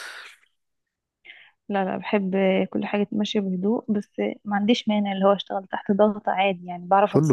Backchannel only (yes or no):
no